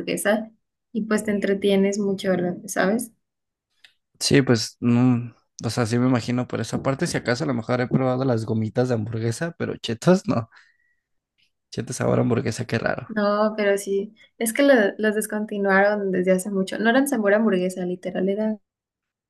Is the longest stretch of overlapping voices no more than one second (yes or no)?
yes